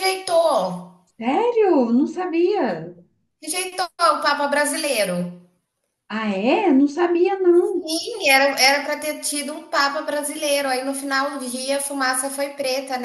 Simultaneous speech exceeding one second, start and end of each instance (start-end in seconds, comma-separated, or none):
none